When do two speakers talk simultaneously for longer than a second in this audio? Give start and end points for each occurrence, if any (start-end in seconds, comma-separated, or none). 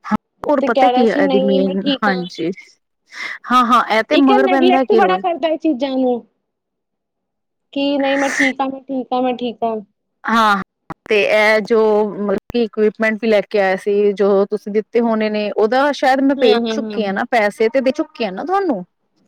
0.6-2.3